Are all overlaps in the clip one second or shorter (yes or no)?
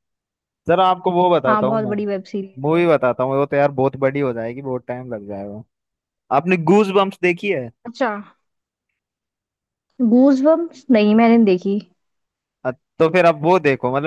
yes